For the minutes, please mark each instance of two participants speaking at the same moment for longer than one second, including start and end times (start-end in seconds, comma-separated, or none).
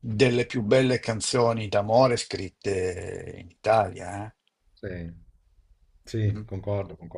none